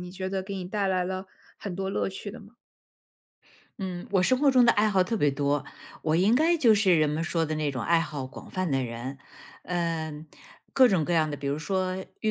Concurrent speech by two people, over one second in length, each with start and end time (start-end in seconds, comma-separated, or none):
none